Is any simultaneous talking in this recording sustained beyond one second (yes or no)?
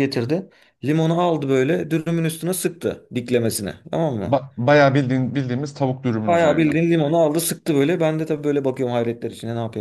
no